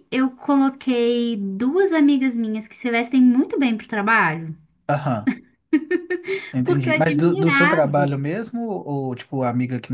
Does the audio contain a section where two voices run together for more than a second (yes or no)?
yes